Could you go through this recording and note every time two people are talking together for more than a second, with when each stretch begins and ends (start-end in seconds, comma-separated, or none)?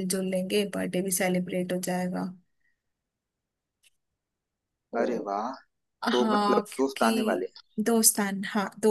6.1-7.5